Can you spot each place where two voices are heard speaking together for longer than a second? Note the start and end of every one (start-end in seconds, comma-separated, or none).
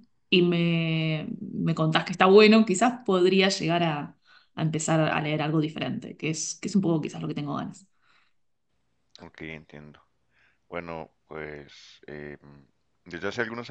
none